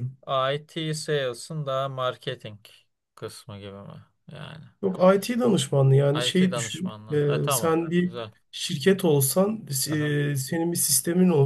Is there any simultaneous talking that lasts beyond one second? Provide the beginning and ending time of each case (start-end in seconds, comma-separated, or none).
6.1-8.2